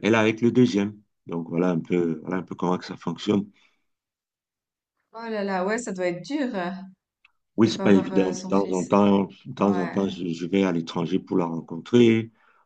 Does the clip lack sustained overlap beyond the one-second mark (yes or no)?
no